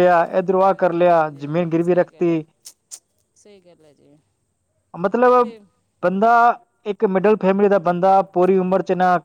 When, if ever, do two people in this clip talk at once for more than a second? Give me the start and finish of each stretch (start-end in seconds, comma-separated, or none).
0.6-2.4